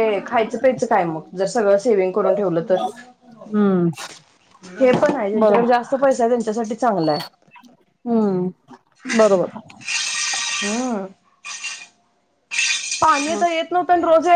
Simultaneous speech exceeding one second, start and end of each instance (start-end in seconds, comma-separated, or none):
none